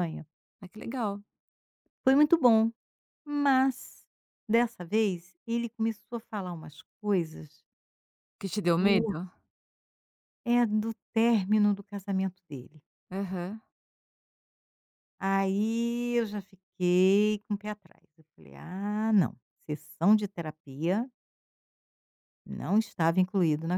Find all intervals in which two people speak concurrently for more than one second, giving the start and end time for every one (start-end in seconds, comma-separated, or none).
none